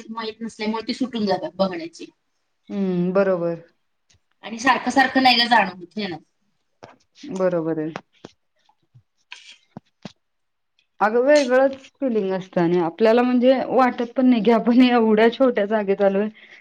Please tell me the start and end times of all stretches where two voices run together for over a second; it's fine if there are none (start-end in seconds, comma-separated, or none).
none